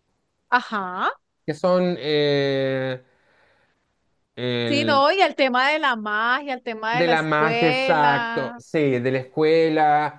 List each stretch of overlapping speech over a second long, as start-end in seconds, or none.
6.9-8.6